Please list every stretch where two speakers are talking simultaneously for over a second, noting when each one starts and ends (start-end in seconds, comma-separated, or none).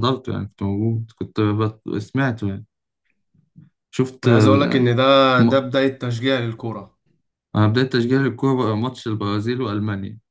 none